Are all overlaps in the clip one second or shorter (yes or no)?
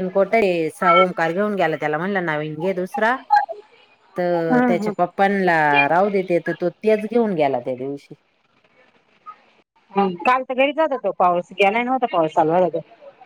yes